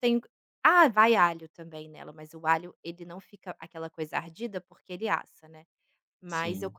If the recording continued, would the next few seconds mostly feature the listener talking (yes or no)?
no